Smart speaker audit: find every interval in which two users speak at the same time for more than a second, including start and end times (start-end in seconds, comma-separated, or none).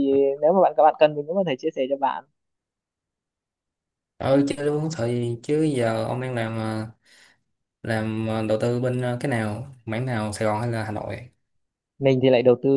none